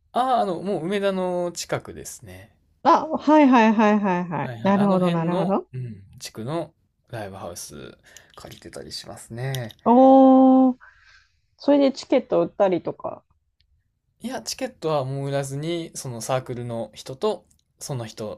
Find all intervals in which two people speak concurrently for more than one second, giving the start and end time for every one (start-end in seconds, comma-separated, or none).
4.4-5.7